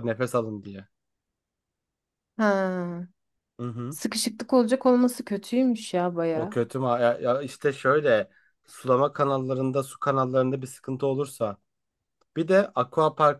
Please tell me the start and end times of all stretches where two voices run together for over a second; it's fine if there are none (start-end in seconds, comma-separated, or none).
none